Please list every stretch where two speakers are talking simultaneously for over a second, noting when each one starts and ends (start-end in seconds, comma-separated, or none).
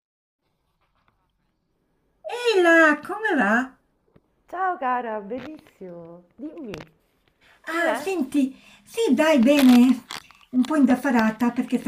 none